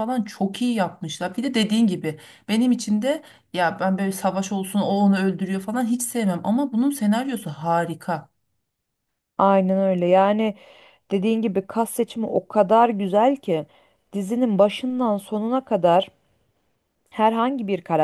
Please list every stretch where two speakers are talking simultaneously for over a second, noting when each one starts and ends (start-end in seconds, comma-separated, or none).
none